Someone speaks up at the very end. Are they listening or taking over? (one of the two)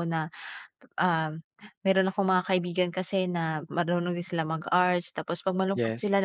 listening